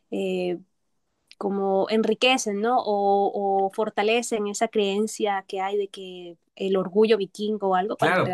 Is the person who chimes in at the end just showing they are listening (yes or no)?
no